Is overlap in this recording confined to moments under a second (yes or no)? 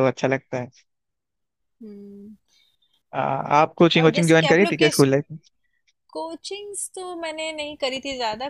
no